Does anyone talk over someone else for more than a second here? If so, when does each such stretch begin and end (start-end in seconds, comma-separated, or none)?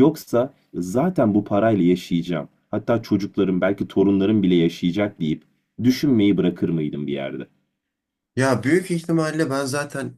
none